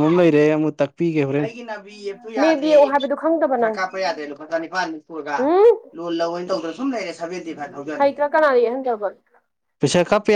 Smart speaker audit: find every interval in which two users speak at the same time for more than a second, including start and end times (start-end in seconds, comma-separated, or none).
none